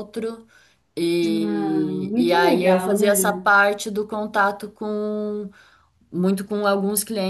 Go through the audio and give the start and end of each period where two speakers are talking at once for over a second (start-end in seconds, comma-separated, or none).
1.2-3.1